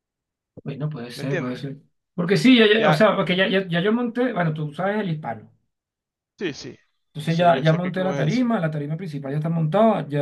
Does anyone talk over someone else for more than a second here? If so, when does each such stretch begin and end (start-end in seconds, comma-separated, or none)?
7.3-8.5